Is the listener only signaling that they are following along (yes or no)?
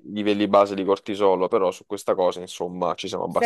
no